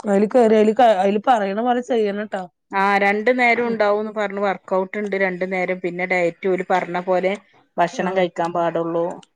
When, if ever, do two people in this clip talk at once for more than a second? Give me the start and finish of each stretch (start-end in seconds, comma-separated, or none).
none